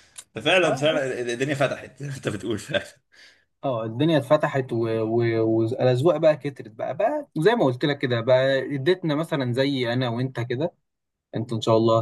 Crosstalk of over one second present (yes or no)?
no